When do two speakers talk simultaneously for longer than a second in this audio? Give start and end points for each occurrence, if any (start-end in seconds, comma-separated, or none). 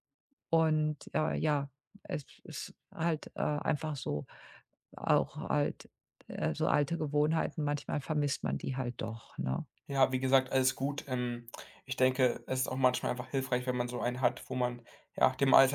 none